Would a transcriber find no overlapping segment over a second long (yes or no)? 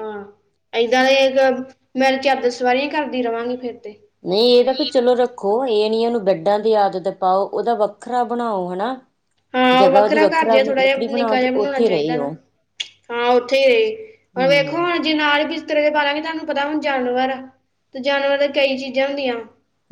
no